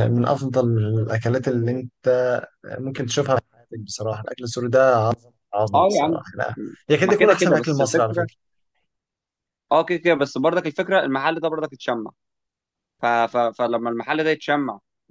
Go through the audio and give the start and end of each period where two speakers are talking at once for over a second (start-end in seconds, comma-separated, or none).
7.0-8.3